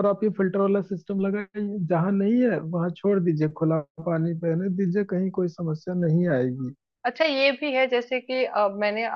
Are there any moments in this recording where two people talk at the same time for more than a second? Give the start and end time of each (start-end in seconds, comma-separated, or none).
none